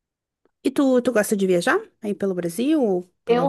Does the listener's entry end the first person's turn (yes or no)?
yes